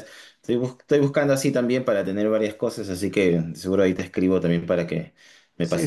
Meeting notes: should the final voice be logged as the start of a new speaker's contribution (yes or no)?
yes